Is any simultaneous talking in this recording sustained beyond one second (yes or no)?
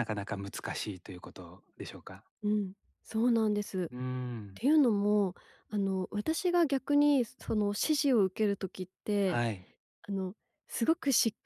no